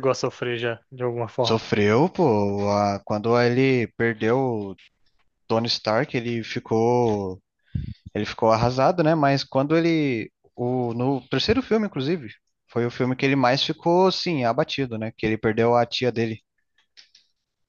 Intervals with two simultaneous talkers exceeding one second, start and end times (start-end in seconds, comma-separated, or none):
none